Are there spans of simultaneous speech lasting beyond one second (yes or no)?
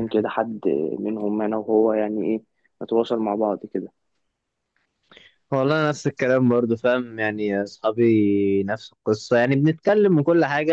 no